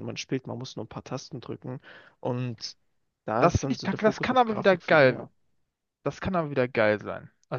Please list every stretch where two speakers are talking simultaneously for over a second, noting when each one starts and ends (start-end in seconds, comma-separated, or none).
3.4-5.3